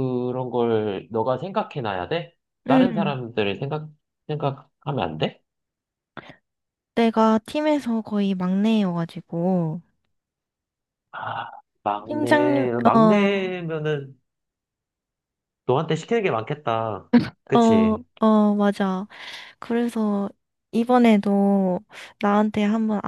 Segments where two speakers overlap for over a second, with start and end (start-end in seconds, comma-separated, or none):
12.0-13.5